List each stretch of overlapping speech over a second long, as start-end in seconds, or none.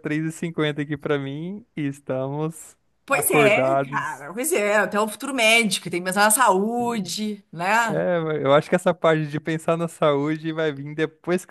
3.0-4.3